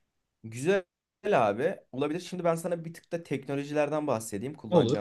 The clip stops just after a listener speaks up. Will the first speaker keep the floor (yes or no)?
yes